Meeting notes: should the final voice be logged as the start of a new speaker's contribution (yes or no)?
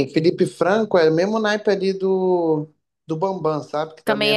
yes